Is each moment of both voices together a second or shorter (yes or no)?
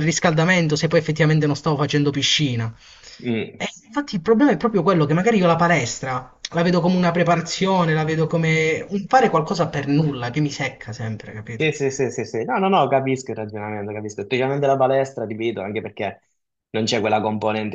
yes